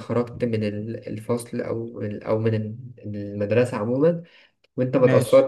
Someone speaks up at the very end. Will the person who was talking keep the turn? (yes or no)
yes